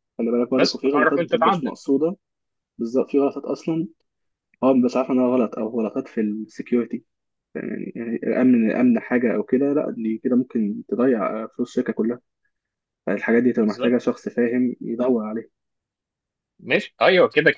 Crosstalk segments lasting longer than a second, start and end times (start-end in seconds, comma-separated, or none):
0.5-1.8